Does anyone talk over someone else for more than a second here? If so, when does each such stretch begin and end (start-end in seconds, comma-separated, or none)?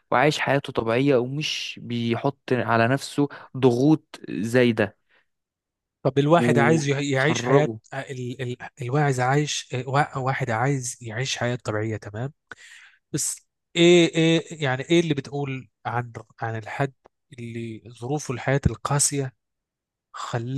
6.4-7.8